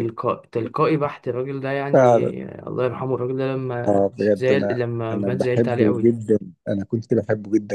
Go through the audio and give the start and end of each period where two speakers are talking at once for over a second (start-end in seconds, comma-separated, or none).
3.9-6.1